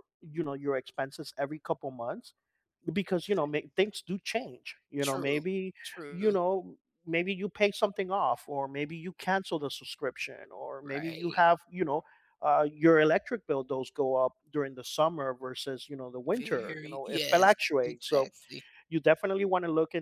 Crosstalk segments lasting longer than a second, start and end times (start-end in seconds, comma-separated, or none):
16.4-18.3